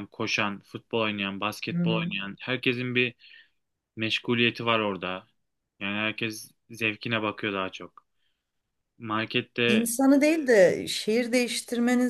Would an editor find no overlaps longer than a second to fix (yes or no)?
yes